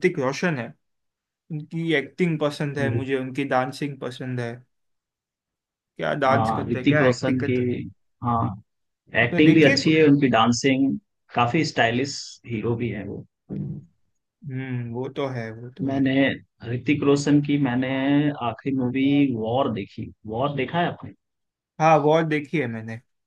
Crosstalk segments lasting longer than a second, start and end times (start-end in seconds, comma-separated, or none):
6.3-7.6